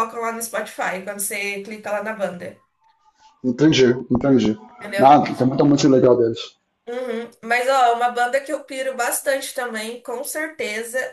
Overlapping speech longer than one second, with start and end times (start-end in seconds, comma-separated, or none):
none